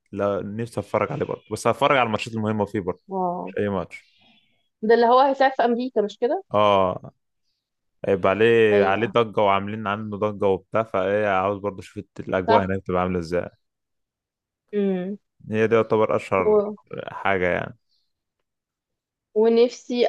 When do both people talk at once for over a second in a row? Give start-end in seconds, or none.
none